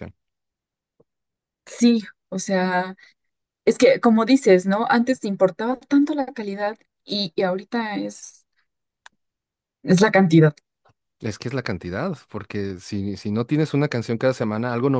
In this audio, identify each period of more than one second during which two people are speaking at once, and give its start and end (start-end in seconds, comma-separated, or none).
none